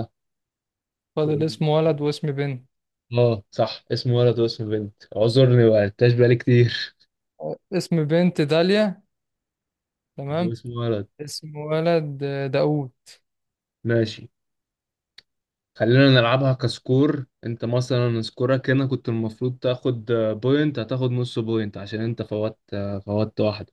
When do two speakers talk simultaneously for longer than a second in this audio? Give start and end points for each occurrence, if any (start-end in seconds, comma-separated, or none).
none